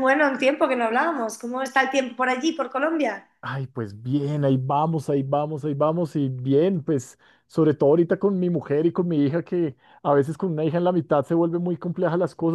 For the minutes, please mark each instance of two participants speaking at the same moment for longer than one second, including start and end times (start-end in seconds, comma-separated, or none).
none